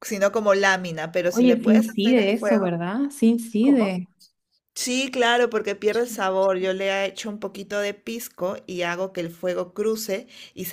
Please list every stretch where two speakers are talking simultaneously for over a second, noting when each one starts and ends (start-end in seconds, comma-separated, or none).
1.3-2.7